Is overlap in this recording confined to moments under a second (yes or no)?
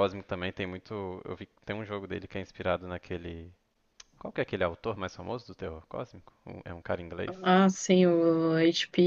yes